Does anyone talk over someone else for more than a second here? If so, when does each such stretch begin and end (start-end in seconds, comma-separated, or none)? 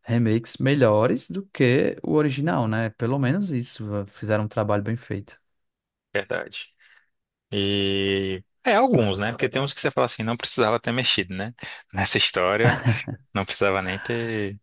none